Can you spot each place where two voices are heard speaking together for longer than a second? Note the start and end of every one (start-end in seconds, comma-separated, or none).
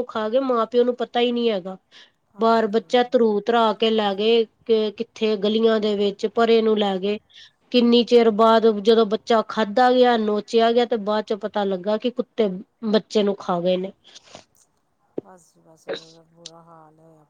none